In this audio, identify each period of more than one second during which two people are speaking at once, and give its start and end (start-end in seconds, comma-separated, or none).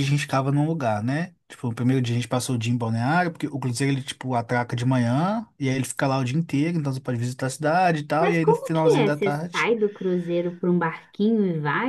8.2-9.7